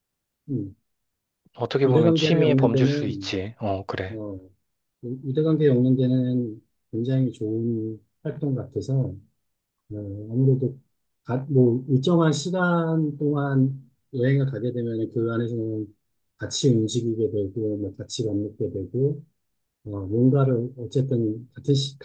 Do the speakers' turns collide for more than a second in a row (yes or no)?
yes